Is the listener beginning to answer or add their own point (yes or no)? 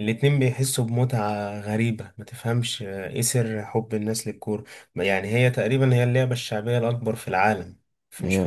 no